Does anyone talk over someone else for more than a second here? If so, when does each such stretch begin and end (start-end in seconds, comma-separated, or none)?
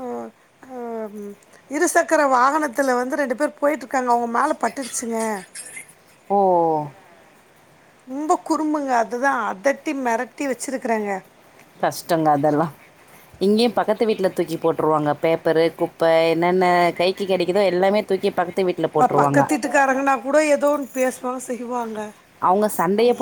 none